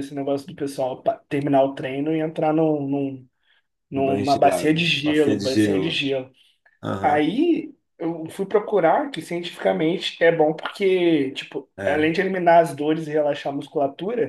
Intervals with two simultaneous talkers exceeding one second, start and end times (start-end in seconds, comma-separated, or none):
3.9-6.0